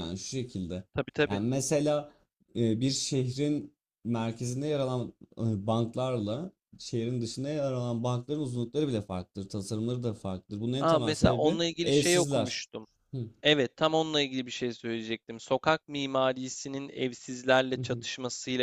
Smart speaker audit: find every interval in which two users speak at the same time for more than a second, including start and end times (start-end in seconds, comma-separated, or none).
10.8-12.6